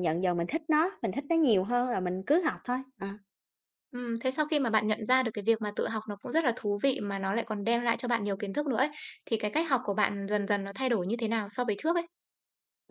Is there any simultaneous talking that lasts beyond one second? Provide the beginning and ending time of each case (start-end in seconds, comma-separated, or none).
none